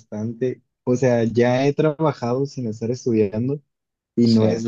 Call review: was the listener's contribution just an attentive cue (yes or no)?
yes